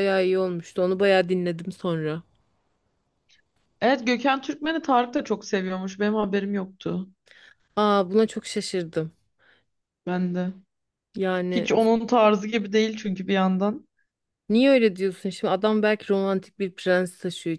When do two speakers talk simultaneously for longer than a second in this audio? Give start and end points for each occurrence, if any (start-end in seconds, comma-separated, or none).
none